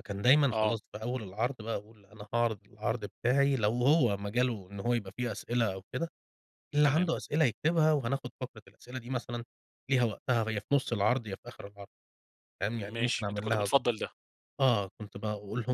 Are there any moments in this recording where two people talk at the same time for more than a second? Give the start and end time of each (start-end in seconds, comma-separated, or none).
12.7-13.9